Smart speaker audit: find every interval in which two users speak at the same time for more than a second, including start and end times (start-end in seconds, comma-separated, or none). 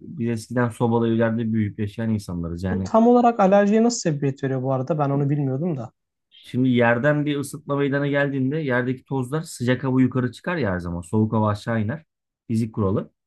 none